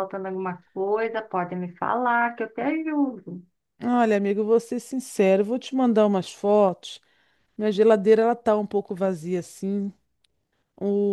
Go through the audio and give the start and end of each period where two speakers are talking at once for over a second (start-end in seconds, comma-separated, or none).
none